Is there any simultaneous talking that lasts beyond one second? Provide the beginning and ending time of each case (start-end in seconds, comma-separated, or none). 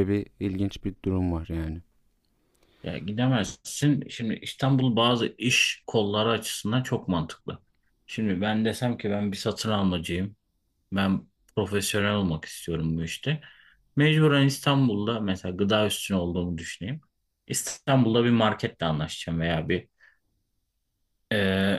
none